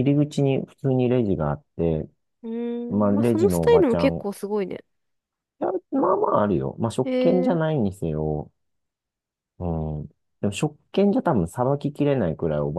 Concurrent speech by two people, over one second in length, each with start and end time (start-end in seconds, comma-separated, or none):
3.0-4.3